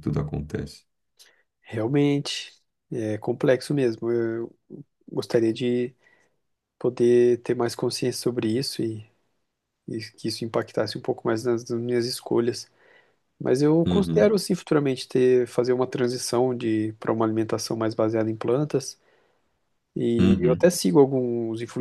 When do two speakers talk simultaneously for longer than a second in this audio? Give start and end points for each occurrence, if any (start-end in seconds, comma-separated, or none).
none